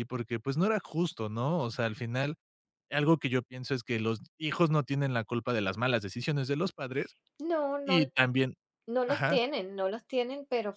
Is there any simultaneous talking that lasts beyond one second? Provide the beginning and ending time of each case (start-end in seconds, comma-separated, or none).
none